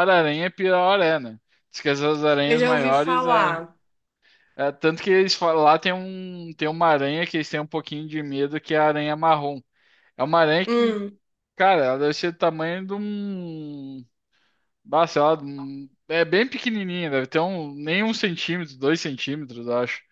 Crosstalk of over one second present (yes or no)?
yes